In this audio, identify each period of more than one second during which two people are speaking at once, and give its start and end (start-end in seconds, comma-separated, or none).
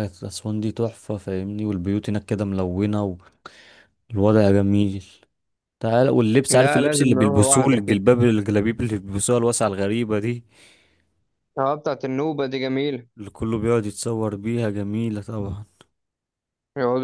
6.5-8.0